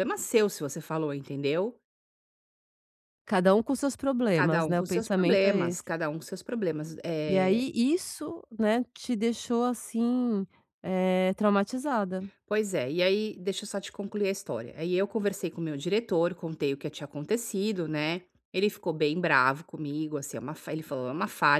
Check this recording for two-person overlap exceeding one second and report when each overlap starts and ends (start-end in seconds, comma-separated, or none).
4.3-5.9